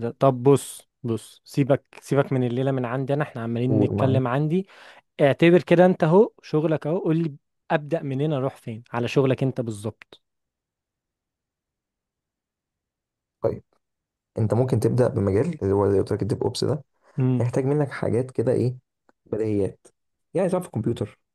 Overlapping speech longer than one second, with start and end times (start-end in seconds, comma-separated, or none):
none